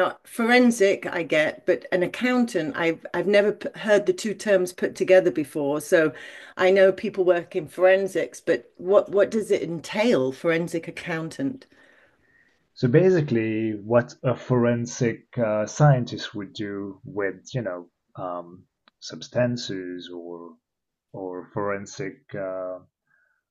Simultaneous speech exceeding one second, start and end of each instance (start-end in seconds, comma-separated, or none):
none